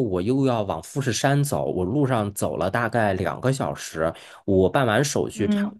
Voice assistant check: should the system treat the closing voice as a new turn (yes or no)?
no